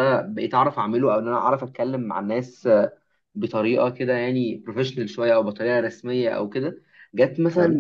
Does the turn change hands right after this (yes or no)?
no